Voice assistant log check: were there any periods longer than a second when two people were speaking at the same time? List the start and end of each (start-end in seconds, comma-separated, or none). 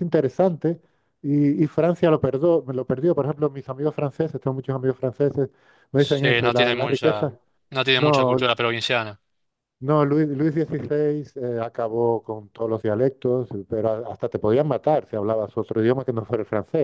6.0-7.3